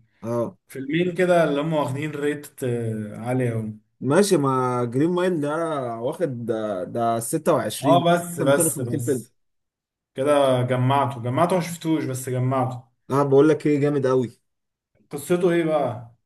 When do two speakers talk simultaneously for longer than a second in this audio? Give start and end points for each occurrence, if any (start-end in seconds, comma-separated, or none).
7.8-9.3